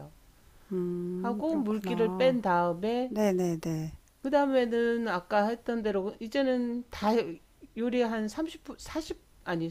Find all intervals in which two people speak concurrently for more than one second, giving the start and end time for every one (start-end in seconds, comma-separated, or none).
1.2-2.4